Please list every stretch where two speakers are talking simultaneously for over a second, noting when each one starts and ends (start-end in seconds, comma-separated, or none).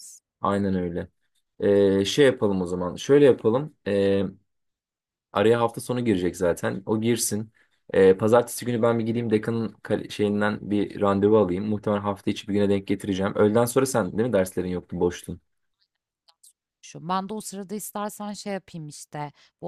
none